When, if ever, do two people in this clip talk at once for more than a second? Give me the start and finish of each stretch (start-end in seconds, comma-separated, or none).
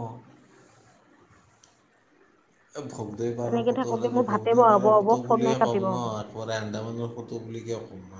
3.5-6.1